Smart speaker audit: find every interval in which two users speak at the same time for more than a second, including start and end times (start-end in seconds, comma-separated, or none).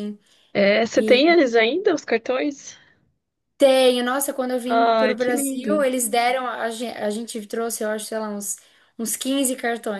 4.7-5.9